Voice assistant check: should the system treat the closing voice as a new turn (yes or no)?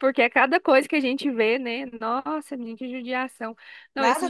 no